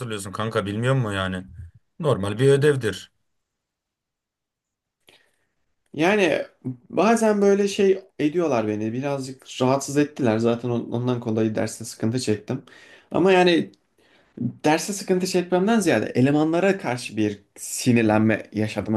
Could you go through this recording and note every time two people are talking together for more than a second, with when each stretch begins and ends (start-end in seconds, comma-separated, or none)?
none